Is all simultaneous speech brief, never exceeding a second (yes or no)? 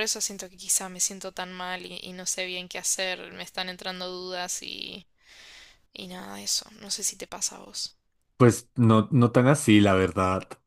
yes